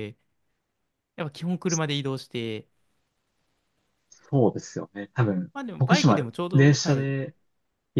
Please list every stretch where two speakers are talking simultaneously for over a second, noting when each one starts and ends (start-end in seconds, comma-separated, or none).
5.5-7.1